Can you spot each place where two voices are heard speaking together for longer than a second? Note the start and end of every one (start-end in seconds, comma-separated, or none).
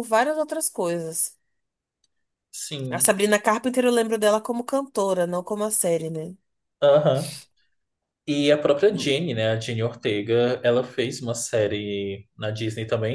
none